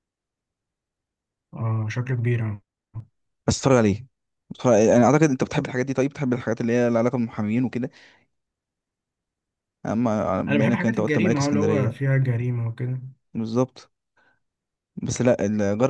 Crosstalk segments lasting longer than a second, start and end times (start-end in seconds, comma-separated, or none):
10.5-12.0